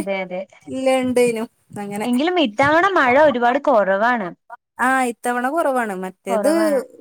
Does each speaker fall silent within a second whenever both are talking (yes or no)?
yes